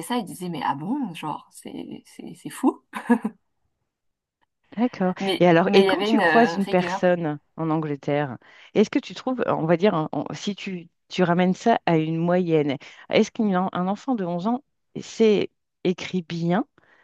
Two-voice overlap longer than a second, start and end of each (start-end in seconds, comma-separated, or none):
5.2-7.0